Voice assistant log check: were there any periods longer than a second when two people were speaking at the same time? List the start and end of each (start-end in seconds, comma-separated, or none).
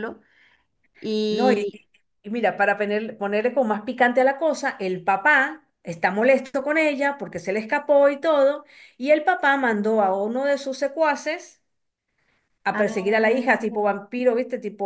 12.7-14.0